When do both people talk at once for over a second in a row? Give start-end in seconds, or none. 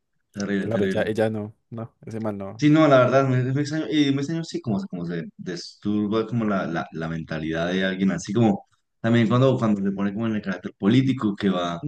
none